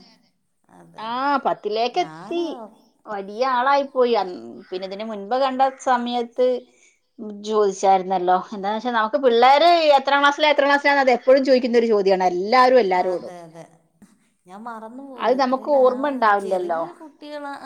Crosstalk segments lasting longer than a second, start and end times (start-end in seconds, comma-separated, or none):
none